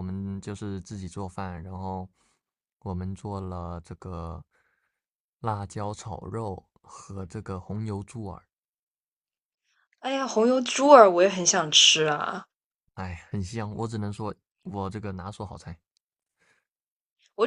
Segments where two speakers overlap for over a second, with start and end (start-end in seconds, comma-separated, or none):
none